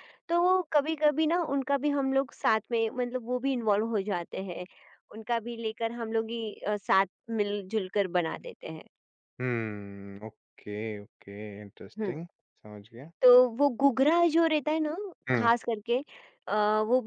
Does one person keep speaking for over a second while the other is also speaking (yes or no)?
no